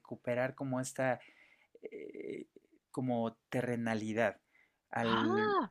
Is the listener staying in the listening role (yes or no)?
yes